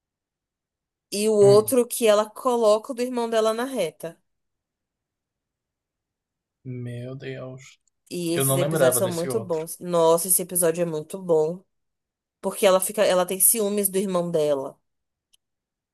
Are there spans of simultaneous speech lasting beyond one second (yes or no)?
yes